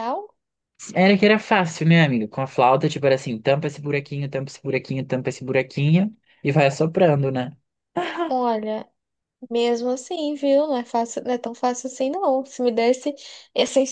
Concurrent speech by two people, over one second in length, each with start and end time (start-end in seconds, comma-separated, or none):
none